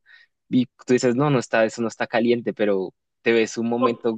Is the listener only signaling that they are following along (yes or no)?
yes